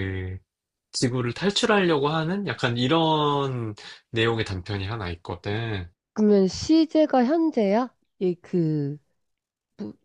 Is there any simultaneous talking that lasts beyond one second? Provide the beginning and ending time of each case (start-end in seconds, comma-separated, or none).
none